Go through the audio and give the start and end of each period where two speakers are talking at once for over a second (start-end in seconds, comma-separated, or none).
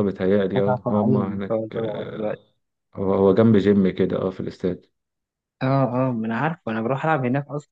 0.6-2.4